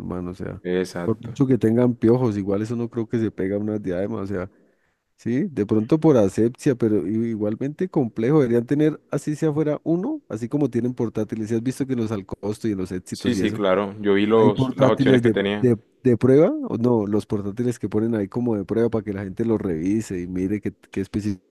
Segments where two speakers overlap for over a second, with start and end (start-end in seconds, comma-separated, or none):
14.3-15.7